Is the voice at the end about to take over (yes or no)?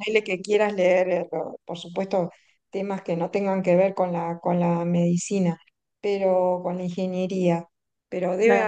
no